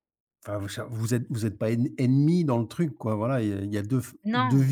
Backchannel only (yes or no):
yes